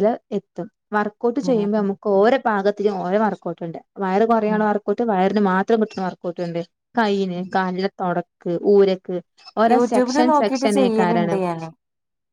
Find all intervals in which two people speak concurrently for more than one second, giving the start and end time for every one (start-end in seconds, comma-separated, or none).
9.7-11.3